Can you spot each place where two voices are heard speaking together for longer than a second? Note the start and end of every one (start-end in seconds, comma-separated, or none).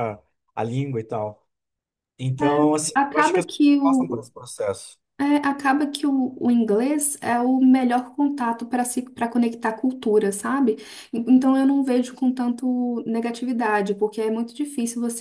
2.4-4.2